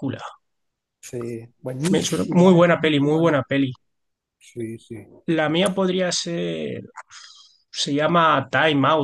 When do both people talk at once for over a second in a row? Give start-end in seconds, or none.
1.9-3.4